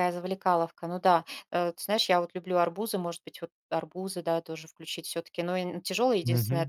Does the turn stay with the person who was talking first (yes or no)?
yes